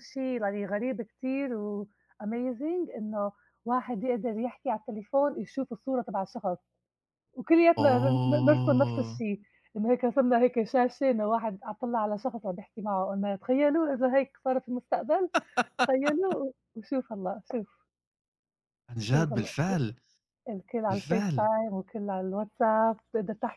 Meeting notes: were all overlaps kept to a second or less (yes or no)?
no